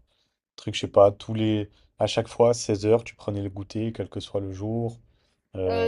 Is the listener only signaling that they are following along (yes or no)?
no